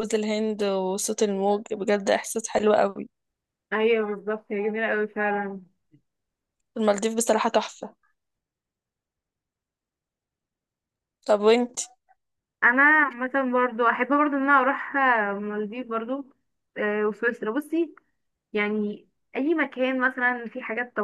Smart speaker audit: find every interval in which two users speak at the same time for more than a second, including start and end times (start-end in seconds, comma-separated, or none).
none